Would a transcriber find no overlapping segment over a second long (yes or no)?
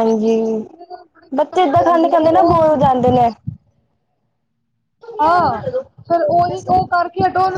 no